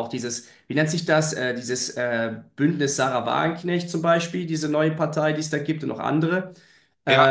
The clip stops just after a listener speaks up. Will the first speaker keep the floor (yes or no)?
no